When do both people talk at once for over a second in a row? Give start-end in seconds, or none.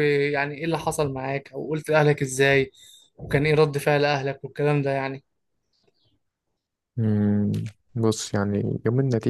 none